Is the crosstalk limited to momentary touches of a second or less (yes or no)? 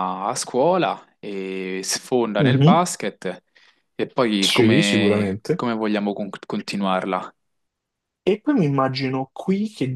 no